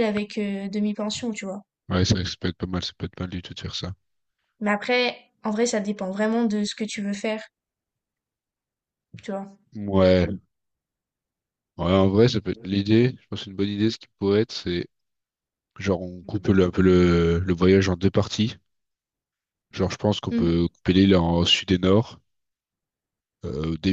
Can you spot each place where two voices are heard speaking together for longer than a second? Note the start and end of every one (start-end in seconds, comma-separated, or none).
none